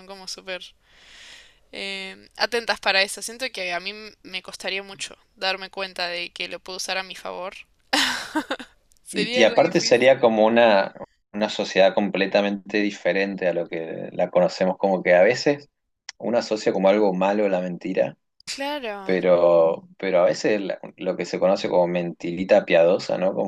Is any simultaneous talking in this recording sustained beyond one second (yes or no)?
yes